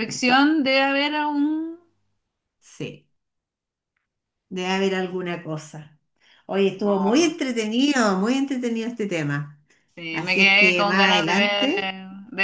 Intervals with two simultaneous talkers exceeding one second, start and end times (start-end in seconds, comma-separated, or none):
10.1-11.7